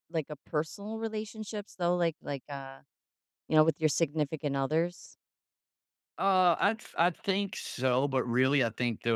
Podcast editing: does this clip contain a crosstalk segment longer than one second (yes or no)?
no